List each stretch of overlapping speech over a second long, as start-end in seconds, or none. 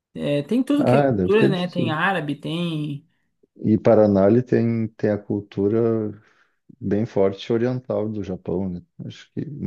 0.8-2.0